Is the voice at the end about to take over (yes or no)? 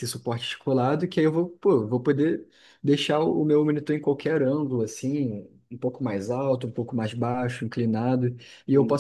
no